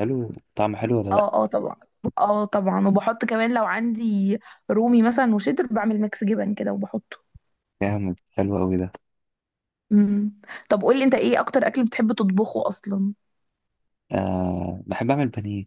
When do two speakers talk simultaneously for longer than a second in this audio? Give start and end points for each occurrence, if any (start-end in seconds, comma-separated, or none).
none